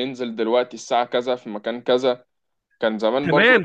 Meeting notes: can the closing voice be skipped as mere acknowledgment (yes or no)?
no